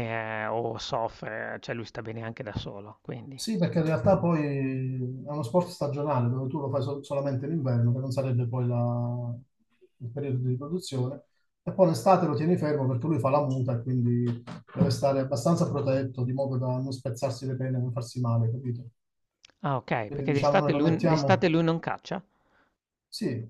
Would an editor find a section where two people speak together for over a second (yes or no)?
yes